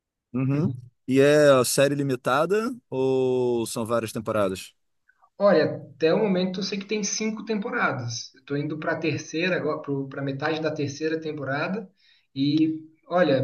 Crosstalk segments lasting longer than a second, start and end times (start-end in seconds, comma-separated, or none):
none